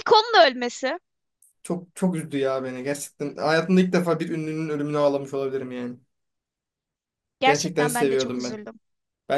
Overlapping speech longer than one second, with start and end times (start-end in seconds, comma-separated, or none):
7.4-8.6